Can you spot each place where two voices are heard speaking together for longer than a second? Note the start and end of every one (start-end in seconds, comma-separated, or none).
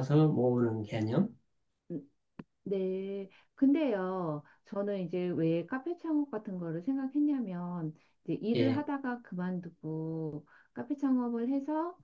none